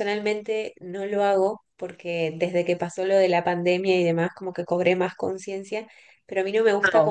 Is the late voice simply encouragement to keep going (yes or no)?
yes